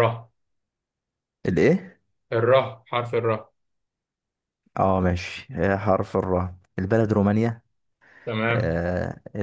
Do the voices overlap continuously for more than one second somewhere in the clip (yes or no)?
no